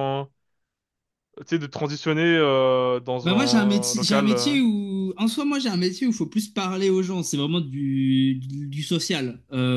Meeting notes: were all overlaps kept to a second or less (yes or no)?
no